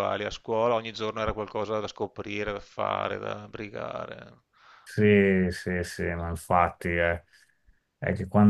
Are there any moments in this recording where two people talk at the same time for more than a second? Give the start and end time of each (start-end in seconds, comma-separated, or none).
none